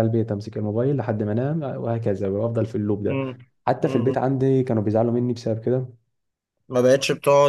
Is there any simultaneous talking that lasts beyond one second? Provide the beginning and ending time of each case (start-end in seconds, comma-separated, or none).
none